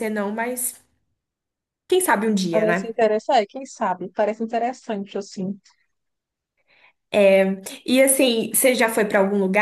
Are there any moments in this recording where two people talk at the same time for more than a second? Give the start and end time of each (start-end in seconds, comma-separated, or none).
none